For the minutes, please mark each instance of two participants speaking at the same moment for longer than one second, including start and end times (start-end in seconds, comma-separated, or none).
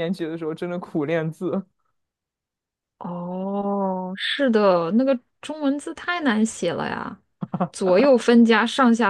none